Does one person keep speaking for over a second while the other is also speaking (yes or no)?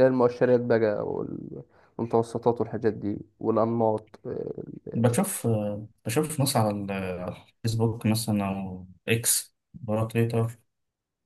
no